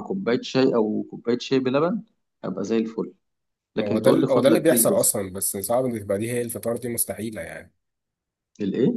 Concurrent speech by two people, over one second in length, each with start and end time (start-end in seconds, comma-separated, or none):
3.8-5.1